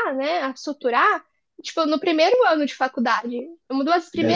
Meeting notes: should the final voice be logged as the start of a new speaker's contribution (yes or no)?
yes